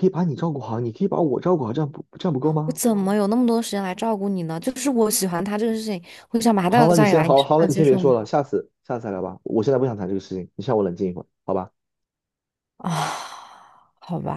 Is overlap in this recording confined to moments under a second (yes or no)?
no